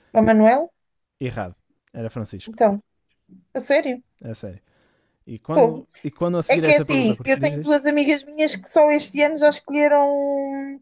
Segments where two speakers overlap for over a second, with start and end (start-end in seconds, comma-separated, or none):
6.5-7.8